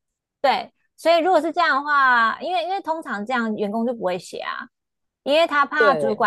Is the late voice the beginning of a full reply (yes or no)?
no